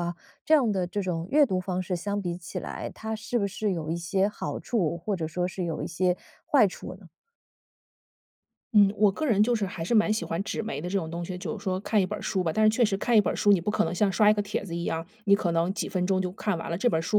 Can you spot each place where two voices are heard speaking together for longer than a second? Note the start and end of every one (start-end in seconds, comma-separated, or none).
none